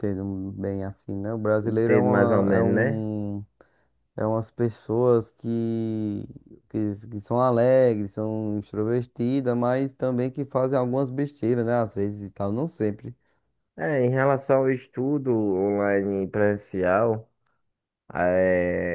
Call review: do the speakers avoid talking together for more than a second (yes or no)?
no